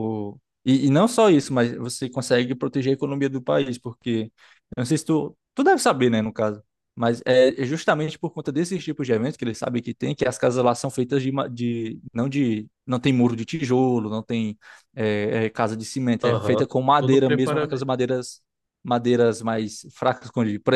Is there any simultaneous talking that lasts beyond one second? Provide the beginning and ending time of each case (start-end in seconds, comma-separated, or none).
16.2-18.0